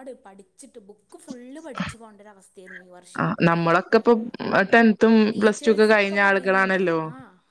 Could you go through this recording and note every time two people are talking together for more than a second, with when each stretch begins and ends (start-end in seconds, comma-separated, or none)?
5.3-7.0